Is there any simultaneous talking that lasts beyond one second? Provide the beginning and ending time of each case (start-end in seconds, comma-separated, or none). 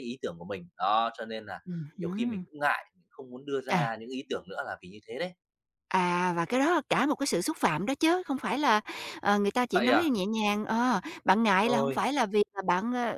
none